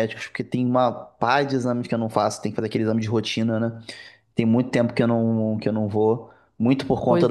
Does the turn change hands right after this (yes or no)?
no